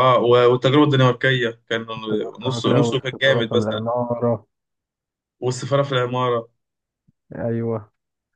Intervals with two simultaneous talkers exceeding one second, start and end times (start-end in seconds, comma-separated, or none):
2.4-3.9